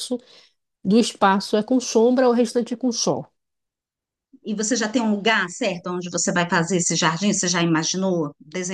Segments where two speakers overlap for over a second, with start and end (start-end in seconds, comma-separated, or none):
none